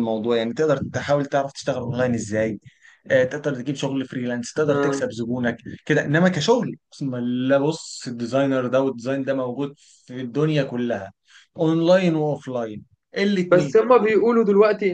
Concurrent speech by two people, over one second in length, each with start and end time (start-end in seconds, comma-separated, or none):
none